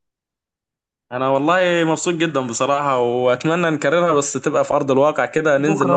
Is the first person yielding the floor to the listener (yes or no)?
yes